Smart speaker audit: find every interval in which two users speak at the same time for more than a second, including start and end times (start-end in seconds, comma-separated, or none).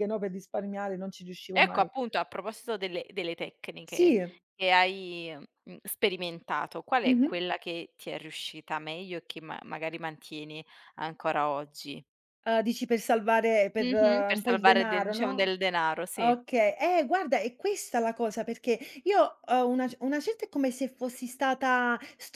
13.8-15.5